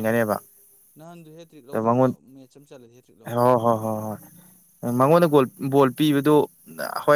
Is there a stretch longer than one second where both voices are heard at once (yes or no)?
no